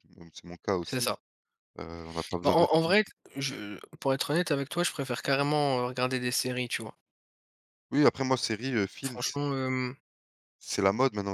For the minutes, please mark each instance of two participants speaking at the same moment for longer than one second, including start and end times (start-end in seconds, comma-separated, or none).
none